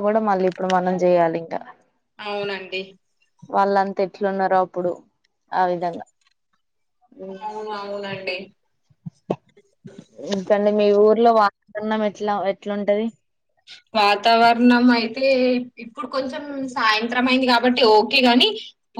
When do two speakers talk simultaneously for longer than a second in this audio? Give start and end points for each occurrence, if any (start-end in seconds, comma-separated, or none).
none